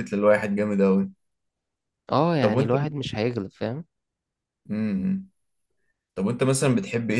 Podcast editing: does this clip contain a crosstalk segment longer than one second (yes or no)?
no